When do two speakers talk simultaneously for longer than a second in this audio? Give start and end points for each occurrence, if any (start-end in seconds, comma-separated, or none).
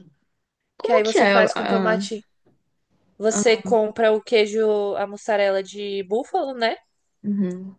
0.8-2.1